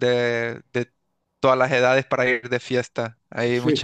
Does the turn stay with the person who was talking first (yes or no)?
yes